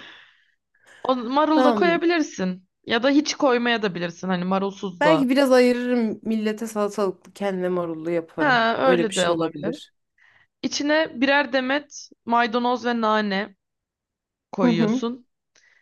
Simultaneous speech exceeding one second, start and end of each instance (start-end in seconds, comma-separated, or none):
8.4-9.7